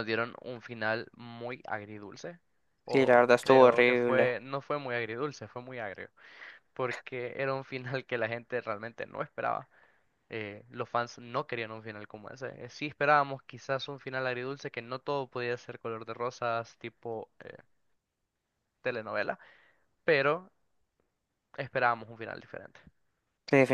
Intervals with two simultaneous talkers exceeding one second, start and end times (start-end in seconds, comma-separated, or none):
2.9-4.3